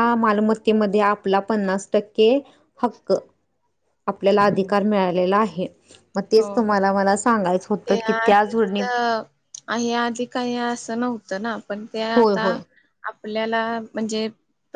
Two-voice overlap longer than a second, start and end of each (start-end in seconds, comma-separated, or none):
none